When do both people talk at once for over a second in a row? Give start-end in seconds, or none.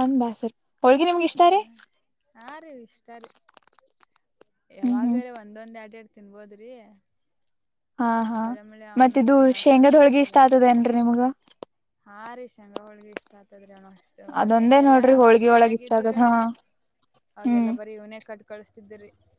14.4-16.2